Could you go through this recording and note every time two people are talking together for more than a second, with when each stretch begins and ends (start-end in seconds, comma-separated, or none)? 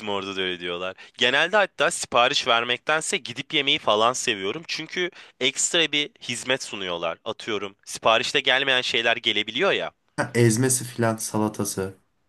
none